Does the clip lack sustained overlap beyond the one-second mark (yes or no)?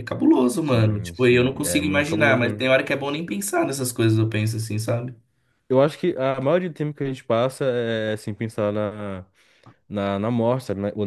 no